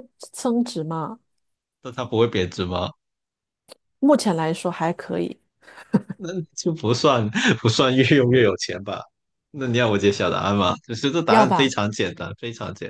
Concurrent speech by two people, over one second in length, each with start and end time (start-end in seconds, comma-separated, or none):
none